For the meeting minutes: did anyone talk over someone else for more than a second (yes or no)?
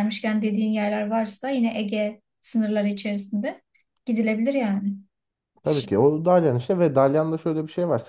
no